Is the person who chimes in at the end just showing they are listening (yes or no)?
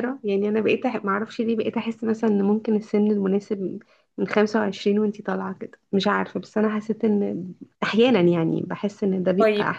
no